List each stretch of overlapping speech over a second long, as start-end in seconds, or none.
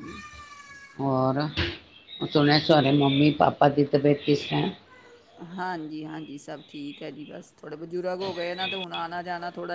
none